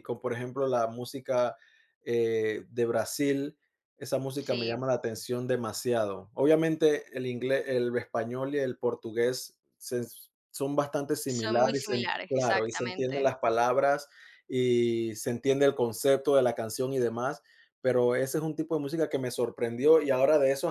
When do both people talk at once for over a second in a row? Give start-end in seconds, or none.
11.2-13.2